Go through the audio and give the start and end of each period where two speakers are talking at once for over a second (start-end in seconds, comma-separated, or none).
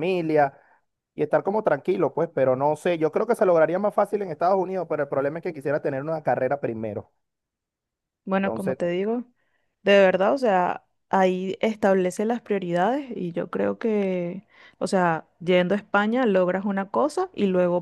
none